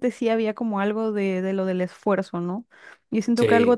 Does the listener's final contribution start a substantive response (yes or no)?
no